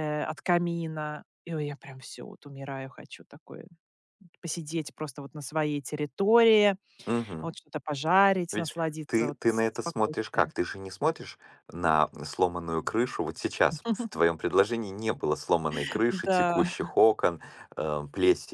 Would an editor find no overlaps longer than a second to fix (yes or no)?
no